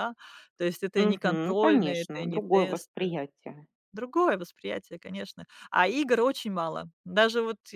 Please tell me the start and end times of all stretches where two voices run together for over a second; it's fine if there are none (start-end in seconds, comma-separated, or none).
1.0-3.2